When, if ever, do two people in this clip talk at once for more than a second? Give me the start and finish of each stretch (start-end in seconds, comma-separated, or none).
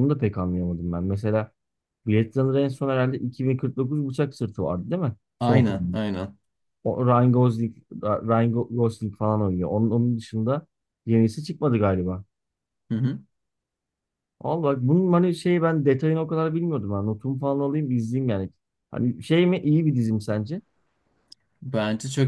none